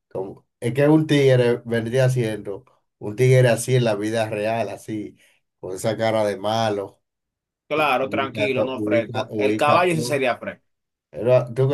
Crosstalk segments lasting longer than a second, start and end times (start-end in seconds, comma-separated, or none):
7.7-10.2